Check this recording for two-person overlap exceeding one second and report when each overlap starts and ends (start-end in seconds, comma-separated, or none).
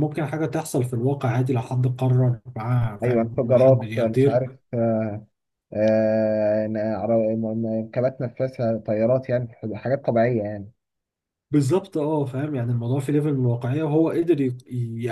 3.0-4.4